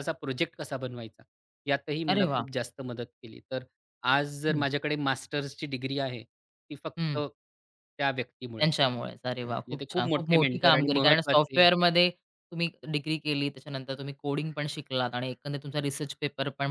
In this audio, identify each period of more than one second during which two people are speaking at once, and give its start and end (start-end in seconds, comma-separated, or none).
9.4-11.7